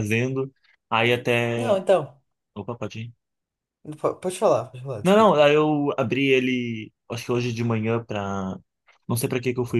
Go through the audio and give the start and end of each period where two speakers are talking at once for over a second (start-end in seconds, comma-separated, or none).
none